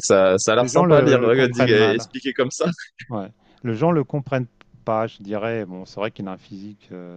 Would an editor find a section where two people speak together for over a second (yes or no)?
yes